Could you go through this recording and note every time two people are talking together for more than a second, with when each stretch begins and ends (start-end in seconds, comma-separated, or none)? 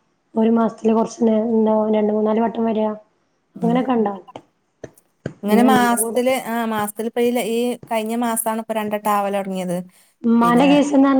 none